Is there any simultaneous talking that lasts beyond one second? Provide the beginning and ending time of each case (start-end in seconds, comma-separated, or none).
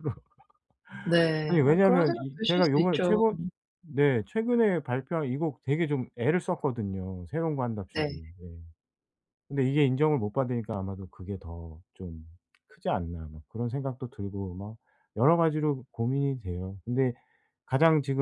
1.5-3.2